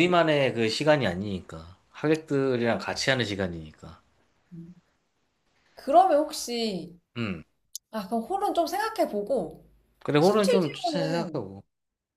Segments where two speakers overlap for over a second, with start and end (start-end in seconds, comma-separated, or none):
10.2-11.4